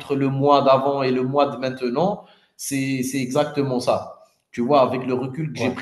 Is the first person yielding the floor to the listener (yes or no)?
no